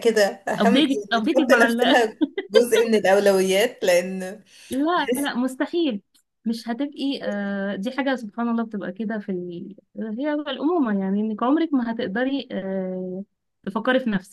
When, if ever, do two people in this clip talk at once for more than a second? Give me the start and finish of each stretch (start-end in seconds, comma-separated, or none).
0.6-2.0